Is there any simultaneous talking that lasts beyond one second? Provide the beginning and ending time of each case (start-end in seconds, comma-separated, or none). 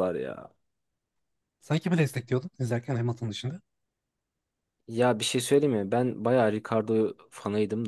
none